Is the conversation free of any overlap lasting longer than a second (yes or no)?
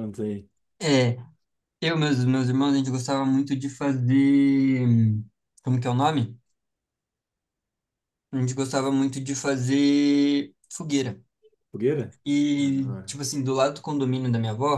yes